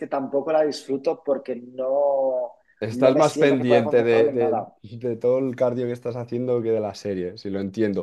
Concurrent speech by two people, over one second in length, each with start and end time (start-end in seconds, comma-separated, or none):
2.9-4.7